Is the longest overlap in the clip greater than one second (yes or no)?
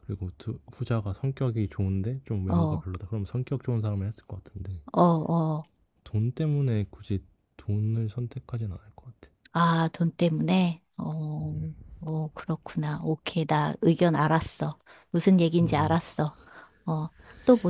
no